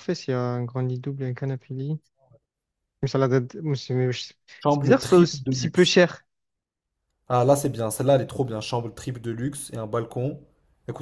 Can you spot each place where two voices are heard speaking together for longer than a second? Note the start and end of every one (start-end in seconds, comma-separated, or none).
4.7-5.9